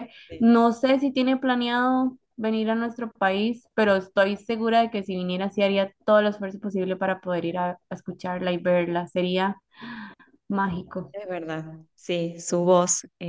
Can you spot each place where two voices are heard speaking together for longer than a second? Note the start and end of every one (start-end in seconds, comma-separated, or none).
none